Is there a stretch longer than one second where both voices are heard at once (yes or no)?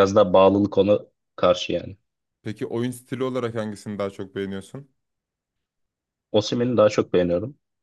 no